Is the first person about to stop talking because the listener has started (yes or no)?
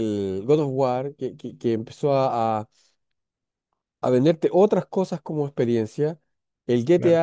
no